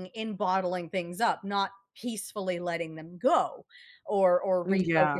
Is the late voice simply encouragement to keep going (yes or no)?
yes